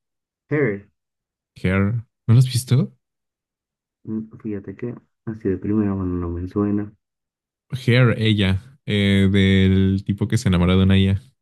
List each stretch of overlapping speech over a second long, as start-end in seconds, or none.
none